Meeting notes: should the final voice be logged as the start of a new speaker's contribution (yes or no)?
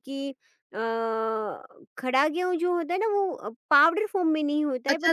yes